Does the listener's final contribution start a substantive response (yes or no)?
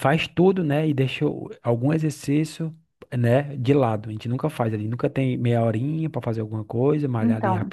no